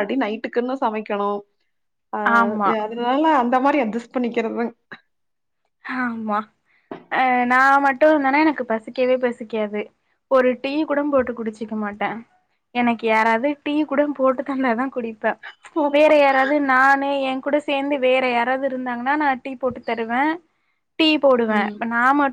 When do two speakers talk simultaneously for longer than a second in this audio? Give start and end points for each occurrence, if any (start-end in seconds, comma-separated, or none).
none